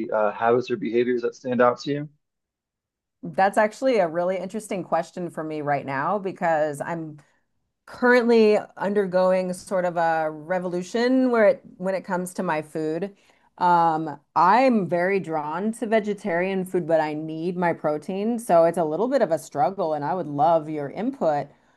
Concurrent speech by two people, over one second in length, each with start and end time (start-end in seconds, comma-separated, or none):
none